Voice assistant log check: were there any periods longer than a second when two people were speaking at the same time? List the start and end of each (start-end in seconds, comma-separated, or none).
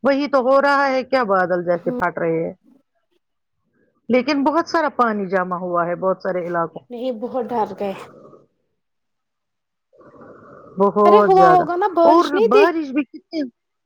none